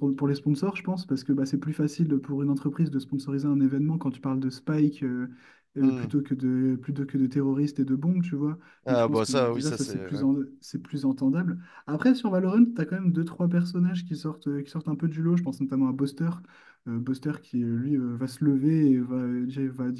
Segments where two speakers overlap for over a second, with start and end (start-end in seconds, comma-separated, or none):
8.8-10.2